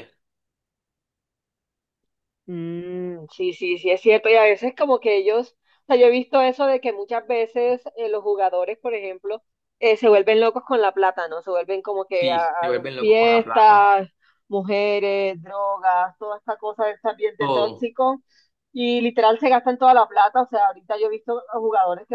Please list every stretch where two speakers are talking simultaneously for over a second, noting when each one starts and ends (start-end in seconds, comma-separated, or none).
12.1-13.9